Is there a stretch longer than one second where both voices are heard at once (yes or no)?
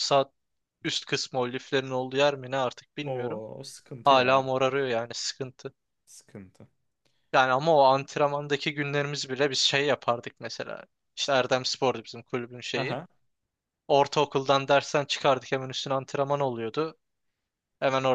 no